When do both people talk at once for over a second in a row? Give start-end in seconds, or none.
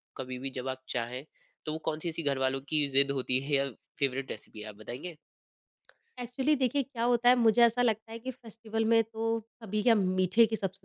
none